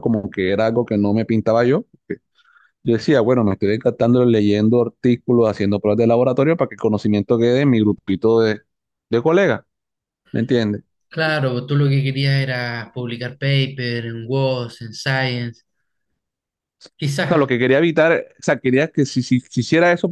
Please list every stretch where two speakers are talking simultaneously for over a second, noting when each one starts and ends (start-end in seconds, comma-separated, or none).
none